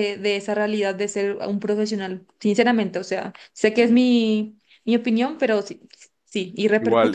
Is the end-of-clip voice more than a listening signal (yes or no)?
yes